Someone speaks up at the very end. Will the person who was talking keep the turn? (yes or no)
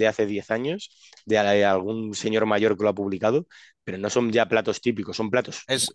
yes